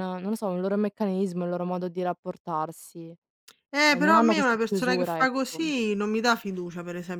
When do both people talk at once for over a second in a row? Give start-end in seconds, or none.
3.9-5.7